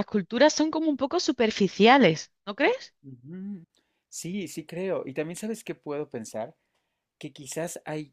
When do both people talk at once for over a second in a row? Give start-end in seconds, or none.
none